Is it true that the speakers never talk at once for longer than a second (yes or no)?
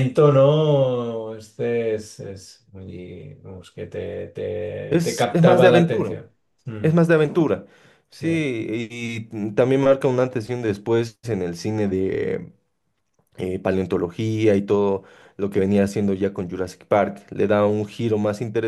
no